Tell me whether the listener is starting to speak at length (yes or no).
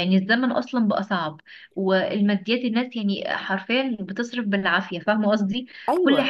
no